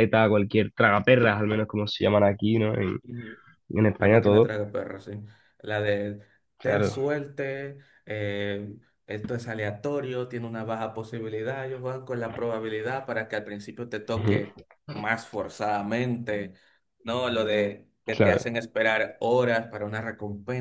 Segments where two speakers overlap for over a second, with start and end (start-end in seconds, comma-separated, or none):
none